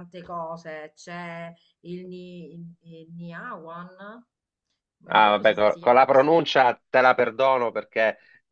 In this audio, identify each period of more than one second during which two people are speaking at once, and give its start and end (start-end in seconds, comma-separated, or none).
5.1-6.5